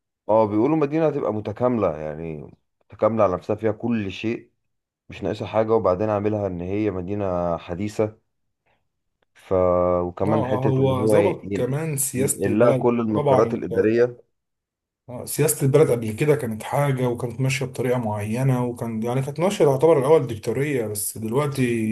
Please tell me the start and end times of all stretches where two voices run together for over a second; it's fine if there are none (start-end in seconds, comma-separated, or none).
10.3-13.7